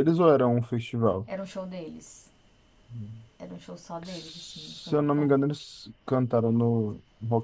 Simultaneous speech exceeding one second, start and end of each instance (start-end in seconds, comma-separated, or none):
4.0-5.3